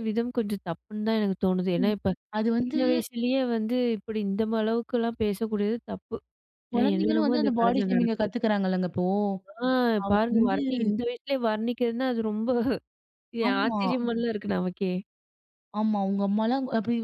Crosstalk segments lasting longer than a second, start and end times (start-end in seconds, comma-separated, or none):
6.7-8.3